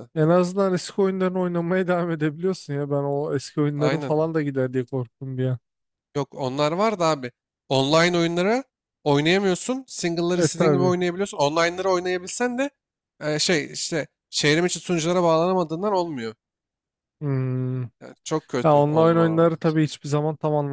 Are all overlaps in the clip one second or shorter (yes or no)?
no